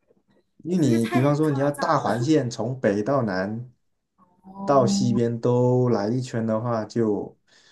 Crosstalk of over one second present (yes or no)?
yes